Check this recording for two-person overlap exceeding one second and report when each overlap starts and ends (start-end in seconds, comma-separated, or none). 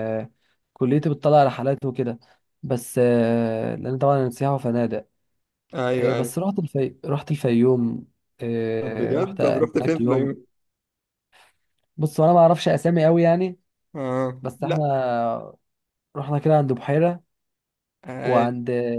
8.8-10.3